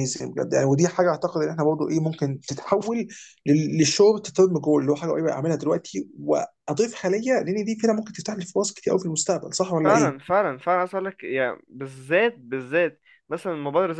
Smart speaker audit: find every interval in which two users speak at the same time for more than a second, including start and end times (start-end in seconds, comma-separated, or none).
none